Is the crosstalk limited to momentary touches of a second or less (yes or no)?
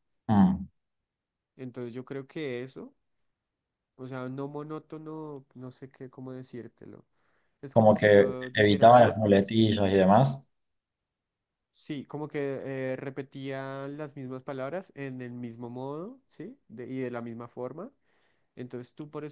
no